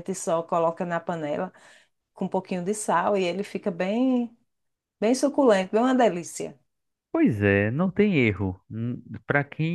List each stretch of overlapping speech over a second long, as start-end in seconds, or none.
none